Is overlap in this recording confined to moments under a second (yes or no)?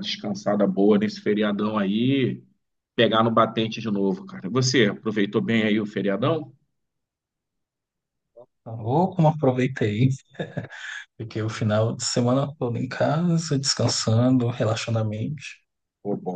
yes